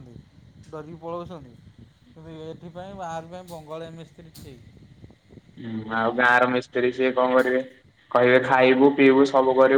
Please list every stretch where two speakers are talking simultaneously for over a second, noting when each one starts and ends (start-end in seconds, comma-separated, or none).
none